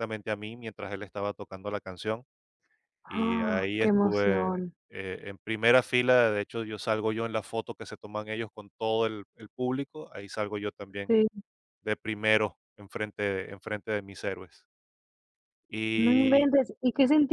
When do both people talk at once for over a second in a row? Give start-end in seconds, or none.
3.1-4.5